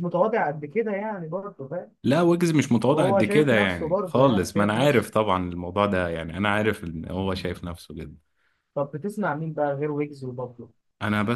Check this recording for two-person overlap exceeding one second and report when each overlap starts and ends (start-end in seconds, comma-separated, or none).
2.9-5.1